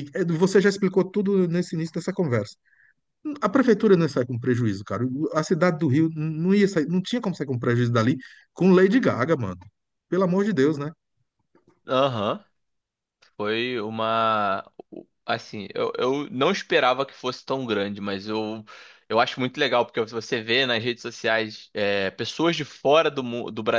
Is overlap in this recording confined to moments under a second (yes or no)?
yes